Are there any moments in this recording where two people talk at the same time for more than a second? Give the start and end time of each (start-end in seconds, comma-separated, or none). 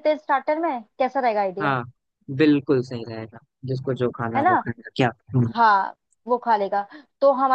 none